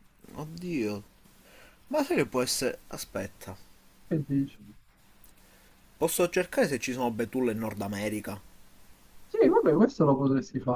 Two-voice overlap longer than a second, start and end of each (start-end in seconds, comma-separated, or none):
none